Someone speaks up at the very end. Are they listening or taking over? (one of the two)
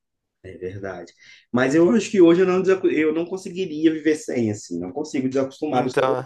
listening